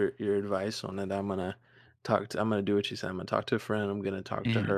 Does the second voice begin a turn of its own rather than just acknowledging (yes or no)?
no